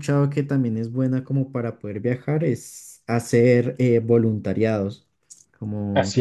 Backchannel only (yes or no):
no